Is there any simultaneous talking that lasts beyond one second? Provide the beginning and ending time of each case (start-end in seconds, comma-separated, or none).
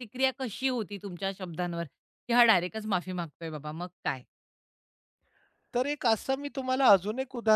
none